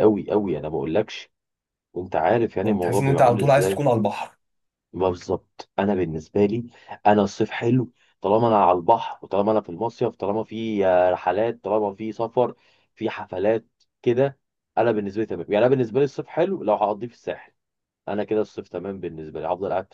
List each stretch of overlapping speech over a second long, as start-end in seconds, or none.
2.6-3.8